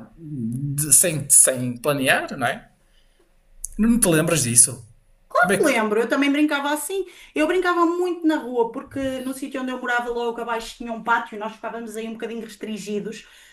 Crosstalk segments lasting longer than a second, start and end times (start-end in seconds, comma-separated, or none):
none